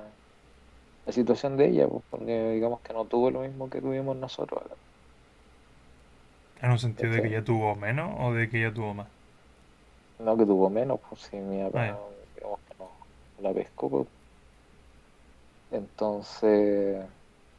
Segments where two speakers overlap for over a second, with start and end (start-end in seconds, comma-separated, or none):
none